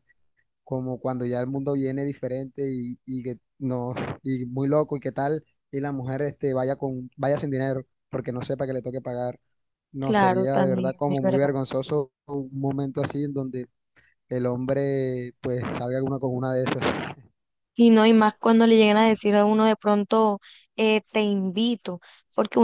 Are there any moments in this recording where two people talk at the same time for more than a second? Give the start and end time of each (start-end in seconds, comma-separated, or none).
10.0-11.5